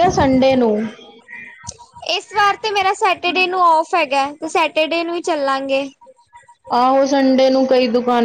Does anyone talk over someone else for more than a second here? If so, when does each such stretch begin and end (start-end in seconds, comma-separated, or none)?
none